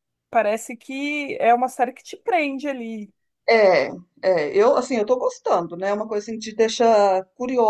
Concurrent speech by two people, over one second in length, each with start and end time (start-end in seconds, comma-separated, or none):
none